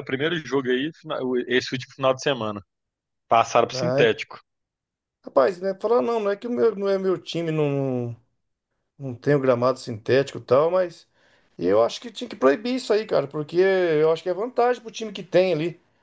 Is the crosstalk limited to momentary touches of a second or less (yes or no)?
yes